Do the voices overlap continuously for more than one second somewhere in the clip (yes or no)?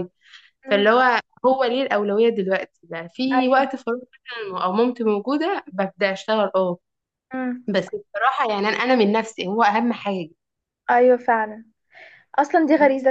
no